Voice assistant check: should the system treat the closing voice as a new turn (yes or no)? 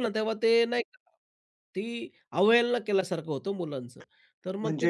yes